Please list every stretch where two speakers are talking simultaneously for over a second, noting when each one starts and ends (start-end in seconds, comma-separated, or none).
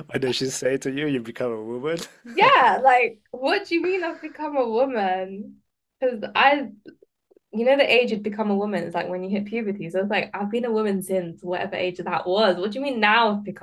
none